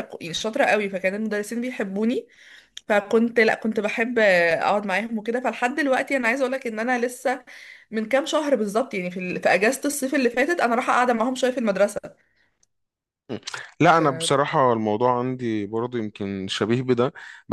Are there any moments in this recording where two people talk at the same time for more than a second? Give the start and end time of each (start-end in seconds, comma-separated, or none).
none